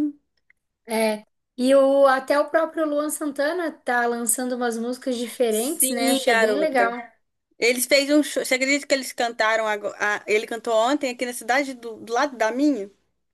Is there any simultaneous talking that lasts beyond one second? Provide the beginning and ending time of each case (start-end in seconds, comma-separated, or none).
5.5-6.9